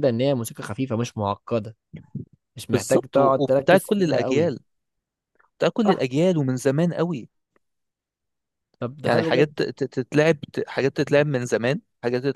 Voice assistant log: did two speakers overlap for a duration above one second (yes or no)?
yes